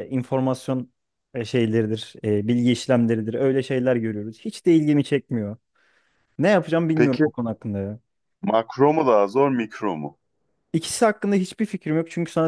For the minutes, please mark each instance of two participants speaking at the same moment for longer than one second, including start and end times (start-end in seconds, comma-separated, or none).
none